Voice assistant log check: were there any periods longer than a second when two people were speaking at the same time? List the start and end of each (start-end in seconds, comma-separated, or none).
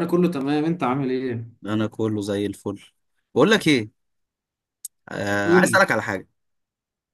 none